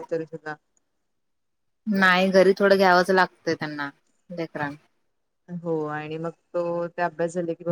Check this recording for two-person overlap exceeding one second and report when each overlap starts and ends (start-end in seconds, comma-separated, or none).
none